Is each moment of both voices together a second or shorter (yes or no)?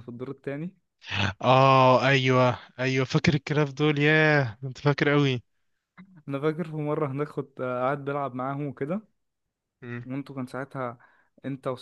yes